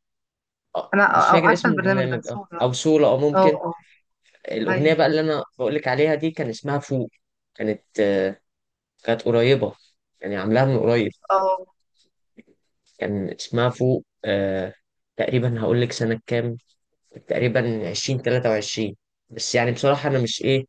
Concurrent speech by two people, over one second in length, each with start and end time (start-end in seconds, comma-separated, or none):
0.9-2.6